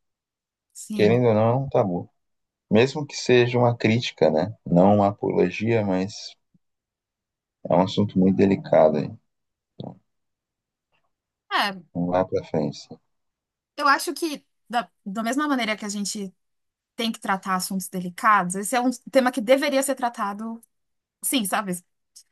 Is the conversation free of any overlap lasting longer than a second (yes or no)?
yes